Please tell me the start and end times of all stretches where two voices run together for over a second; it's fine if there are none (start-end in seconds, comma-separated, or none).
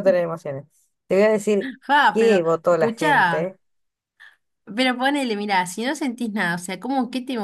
2.1-3.5